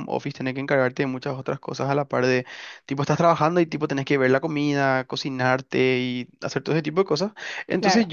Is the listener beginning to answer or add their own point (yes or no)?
no